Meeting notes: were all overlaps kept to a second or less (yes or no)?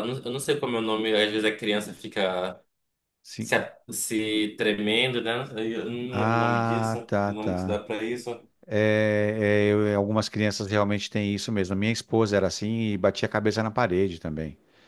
no